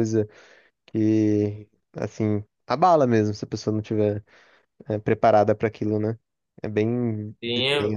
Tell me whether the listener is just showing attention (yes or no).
no